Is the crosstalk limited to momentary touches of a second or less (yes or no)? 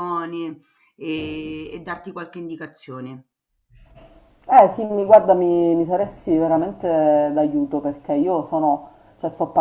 yes